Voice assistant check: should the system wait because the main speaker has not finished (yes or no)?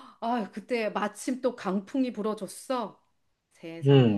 no